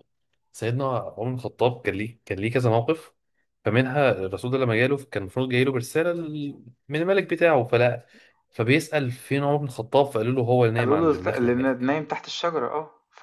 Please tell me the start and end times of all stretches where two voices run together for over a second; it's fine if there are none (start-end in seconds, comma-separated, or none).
10.8-12.0